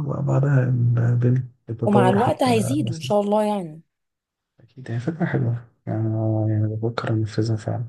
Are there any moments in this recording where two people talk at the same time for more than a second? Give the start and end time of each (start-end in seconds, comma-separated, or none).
1.8-3.1